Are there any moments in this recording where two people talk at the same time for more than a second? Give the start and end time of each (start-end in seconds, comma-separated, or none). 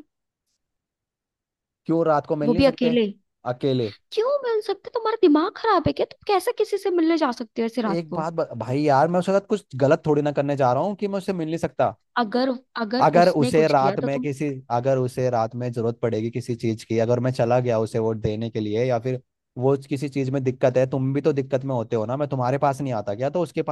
13.0-14.3